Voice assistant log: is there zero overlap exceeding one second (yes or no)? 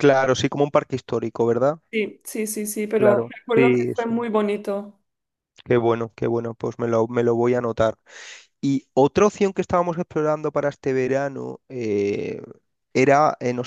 no